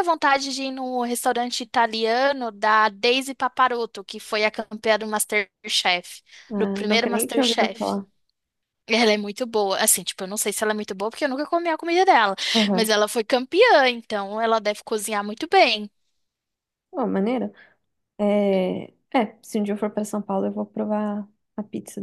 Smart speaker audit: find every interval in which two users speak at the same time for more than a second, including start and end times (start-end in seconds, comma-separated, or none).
6.6-8.0